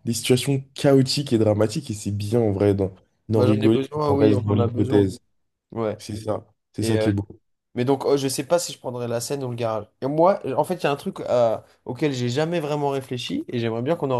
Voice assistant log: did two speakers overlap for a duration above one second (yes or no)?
yes